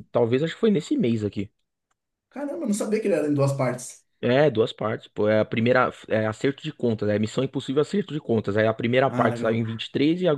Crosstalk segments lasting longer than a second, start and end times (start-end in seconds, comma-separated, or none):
none